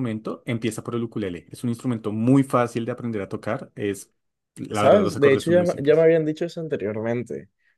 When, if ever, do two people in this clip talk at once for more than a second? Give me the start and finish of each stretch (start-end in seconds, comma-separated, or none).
4.7-6.1